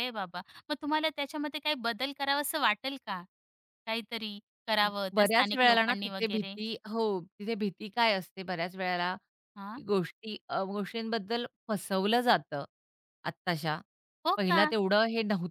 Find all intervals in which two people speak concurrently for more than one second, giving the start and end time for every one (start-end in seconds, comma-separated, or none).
5.2-6.5